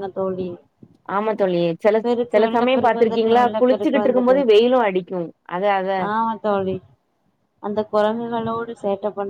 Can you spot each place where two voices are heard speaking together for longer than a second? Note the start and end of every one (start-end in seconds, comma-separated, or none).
2.3-4.4